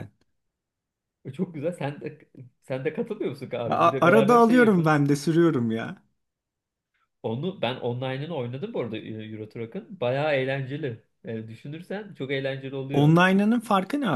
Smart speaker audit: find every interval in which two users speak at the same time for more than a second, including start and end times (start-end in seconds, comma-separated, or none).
3.7-5.0